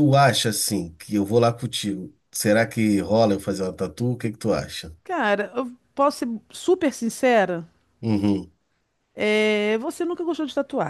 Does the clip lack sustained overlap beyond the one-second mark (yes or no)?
yes